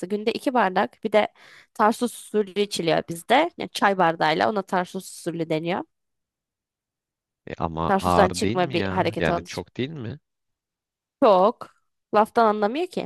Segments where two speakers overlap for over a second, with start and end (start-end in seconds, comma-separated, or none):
7.9-9.6